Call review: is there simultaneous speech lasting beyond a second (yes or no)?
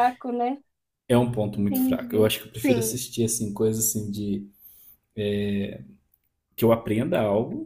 yes